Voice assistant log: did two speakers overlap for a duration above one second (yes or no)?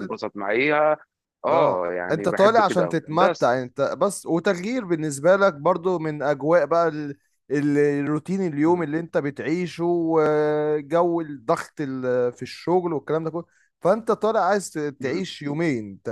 yes